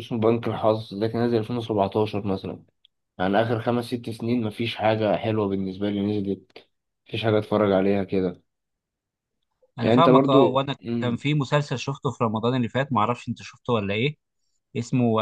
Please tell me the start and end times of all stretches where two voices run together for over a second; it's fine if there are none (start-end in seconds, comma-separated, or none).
9.8-11.2